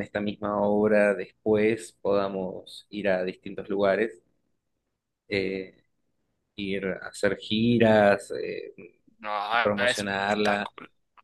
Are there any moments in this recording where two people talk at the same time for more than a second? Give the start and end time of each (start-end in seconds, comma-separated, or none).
9.5-10.7